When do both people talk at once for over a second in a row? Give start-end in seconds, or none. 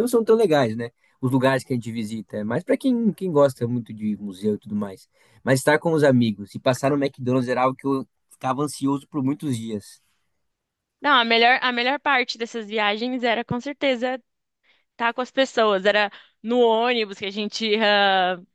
none